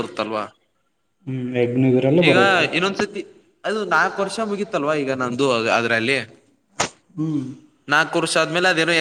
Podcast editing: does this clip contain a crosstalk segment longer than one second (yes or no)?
no